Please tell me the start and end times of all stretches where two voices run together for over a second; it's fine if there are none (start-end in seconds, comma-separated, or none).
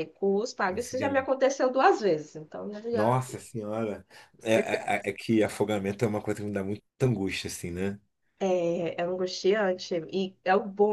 none